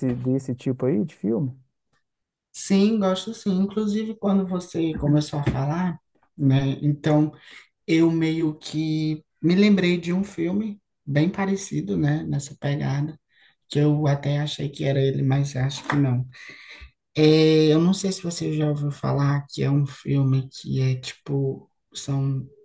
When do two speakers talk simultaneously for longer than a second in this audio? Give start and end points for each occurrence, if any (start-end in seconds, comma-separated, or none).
none